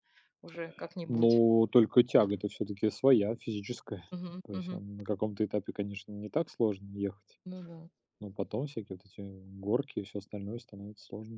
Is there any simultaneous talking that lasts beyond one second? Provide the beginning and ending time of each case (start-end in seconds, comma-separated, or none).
none